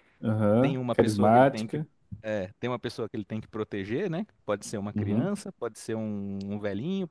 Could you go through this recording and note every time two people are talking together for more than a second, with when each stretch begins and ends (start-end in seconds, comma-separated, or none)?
0.6-1.8